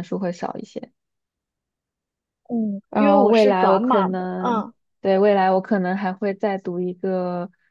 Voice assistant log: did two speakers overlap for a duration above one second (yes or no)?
yes